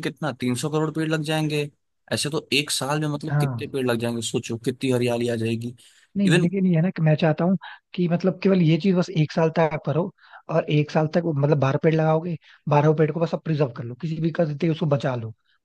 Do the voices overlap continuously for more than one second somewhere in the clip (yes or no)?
no